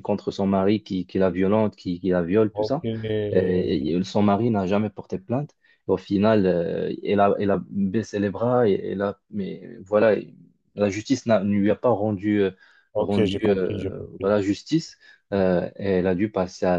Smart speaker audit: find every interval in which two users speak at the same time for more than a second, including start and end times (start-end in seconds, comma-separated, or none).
13.0-14.3